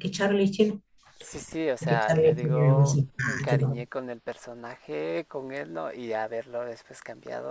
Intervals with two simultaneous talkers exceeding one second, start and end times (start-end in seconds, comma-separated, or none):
1.8-3.8